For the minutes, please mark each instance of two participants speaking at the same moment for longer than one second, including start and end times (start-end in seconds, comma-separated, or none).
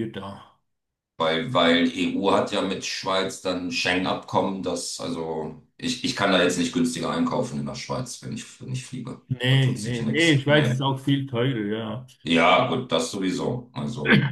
9.3-10.8